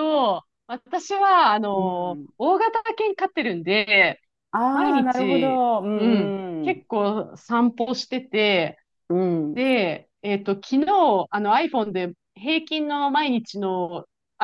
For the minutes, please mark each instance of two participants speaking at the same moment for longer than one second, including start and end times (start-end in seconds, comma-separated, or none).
4.7-6.8